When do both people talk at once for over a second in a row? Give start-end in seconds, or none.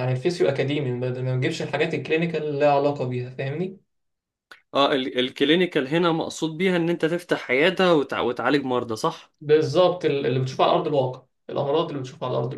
none